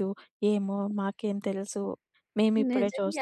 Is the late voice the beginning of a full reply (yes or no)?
yes